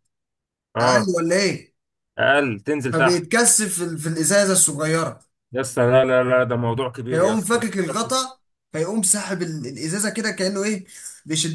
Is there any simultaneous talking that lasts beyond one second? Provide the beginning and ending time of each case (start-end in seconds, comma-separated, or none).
7.1-8.3